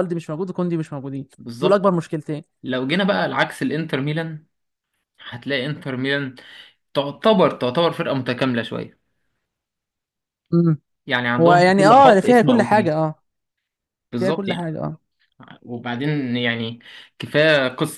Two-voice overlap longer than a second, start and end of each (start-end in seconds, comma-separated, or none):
11.4-13.0